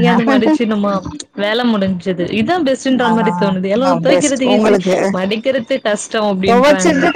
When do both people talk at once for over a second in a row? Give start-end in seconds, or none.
3.1-4.8